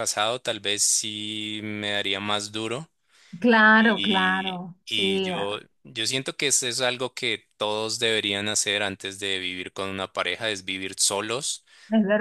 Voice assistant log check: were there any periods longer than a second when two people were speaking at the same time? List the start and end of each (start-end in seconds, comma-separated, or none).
3.8-5.6